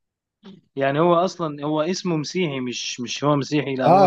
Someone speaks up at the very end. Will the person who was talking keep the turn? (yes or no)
no